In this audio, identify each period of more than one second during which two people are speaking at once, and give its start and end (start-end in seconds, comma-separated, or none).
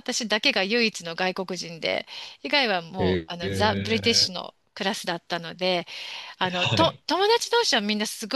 3.0-4.3